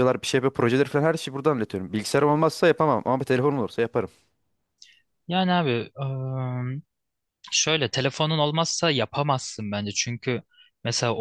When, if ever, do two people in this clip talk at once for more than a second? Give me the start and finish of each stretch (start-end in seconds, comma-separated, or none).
none